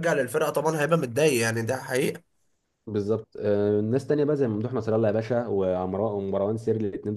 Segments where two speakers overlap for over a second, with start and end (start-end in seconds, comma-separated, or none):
none